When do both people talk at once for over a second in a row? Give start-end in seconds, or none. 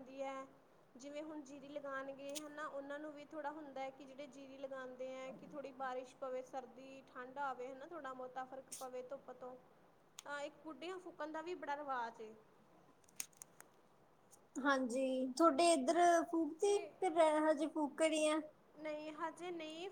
none